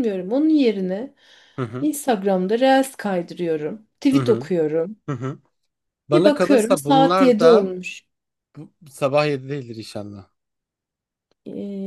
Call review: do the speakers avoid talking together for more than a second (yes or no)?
no